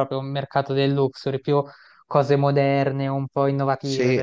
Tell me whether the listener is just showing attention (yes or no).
no